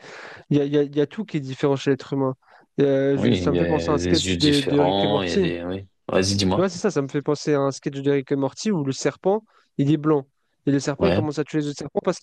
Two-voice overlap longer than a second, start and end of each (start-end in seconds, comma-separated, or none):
3.1-5.5